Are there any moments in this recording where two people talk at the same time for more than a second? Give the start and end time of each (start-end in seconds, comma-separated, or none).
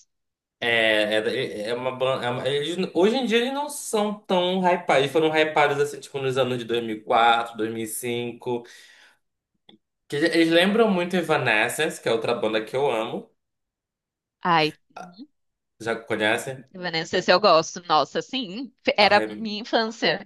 none